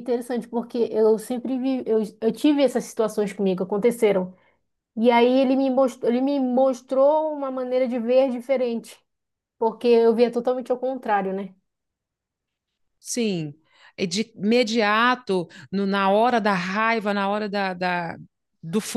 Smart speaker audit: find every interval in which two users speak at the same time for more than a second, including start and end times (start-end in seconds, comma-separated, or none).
none